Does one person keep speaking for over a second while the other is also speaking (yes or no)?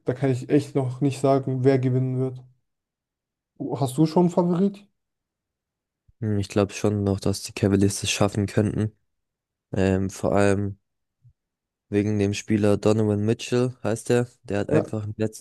no